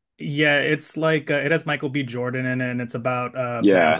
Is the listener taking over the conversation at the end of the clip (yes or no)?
yes